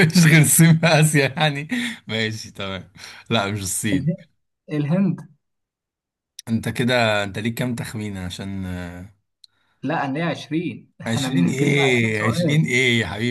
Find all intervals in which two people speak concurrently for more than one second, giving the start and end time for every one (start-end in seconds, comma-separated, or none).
11.1-12.6